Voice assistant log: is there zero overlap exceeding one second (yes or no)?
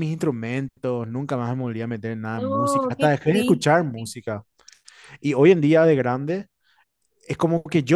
no